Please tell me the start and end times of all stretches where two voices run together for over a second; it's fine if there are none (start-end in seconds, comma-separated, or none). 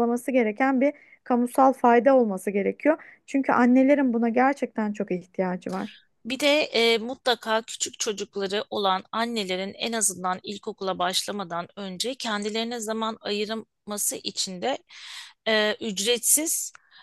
none